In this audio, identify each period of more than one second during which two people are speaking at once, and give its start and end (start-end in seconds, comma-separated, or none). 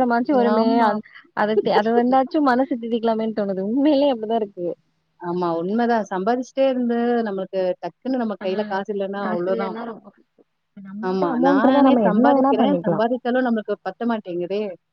11.1-13.0